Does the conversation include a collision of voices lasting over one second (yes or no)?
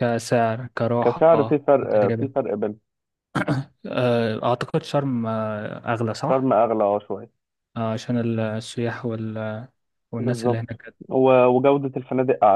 yes